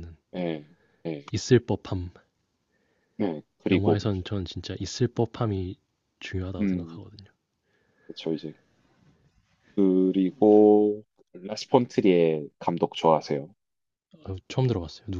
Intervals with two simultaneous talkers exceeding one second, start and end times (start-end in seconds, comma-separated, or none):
none